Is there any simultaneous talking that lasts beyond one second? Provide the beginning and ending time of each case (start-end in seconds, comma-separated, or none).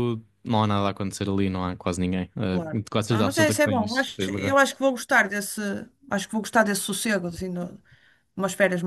2.5-4.6